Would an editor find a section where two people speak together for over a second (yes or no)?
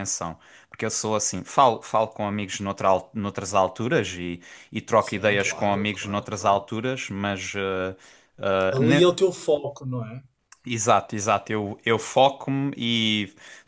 yes